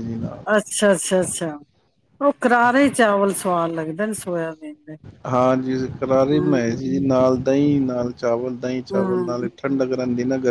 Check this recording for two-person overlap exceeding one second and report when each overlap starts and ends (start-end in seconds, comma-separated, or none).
none